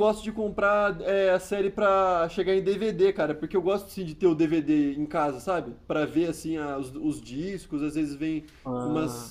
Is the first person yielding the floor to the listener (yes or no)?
no